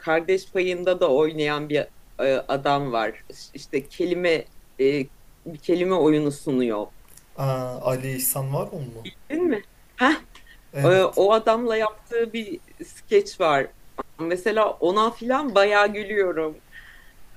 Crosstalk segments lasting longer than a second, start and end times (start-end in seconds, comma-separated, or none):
none